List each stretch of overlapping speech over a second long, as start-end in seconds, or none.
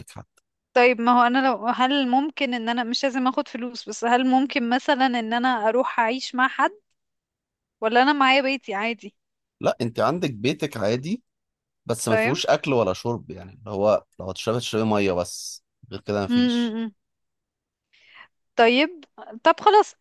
none